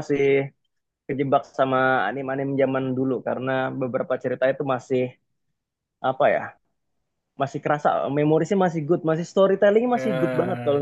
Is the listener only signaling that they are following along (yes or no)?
yes